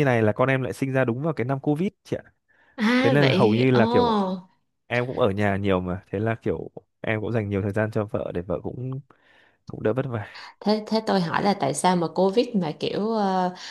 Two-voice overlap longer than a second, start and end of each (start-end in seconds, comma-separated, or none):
3.0-4.2